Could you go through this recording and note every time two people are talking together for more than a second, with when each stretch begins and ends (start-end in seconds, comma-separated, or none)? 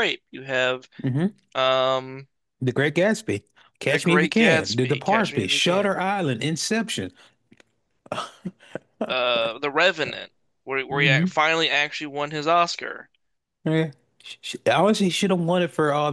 3.9-6.0